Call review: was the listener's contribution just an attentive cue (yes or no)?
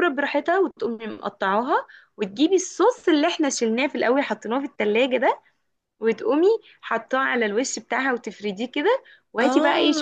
no